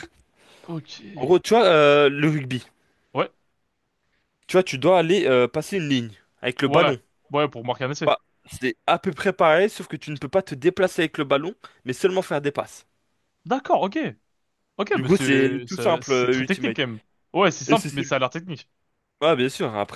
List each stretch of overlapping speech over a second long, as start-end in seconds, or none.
14.9-16.8